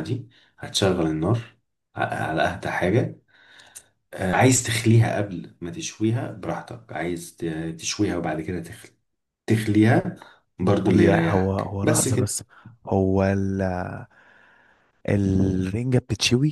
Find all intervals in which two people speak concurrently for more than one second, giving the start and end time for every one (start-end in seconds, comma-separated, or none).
10.9-12.4